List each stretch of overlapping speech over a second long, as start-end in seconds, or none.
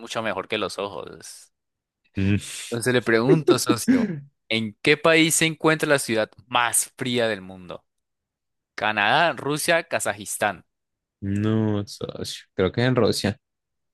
none